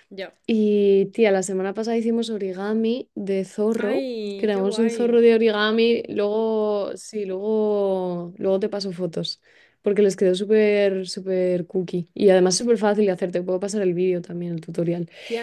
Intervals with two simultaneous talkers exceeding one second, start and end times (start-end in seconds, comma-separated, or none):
3.8-5.2